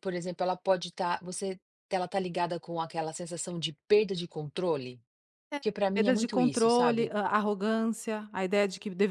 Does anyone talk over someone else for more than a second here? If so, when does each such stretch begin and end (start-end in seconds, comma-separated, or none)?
5.6-7.1